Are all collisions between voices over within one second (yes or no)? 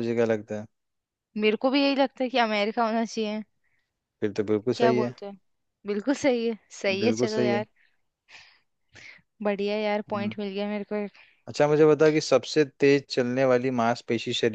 yes